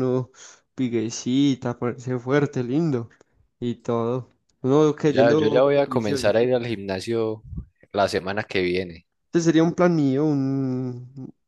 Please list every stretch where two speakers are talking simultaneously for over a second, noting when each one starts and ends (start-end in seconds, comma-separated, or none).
5.0-6.3